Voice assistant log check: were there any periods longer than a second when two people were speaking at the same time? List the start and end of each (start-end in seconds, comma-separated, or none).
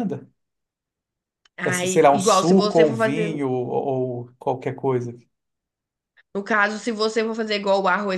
1.6-3.3